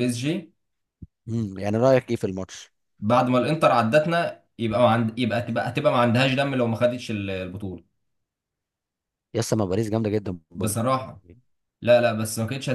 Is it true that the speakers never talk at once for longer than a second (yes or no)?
yes